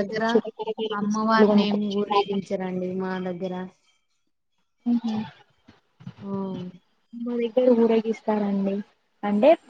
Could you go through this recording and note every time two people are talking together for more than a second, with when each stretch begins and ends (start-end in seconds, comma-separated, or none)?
1.0-2.4